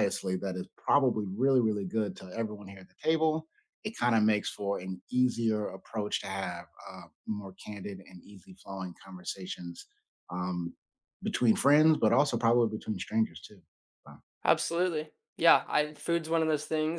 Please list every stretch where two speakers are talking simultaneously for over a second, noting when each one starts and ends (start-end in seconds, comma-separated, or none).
none